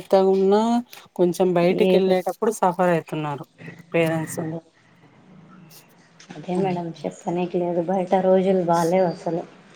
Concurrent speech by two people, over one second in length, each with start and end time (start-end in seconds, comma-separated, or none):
none